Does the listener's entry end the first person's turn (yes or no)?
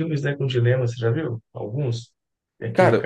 no